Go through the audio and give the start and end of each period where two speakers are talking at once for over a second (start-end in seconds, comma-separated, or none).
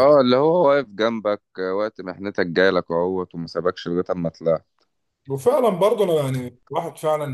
none